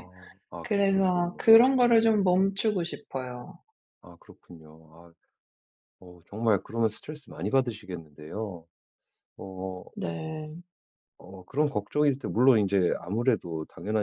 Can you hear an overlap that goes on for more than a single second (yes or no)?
yes